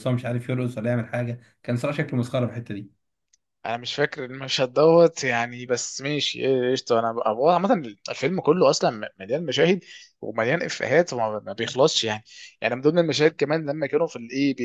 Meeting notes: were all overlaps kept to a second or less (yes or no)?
yes